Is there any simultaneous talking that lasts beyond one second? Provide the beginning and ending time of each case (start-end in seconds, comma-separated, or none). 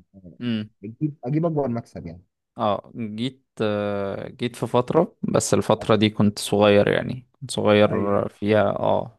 none